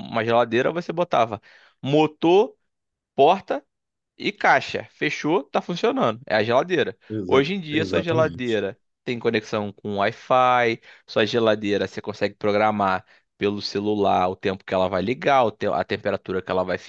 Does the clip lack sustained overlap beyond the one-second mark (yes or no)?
no